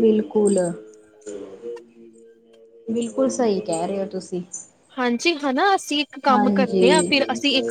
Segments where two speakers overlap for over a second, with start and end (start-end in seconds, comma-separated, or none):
none